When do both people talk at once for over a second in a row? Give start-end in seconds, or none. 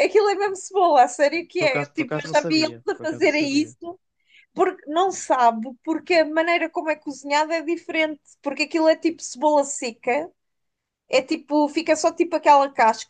1.6-3.8